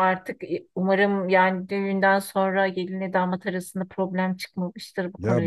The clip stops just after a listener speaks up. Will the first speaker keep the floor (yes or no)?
no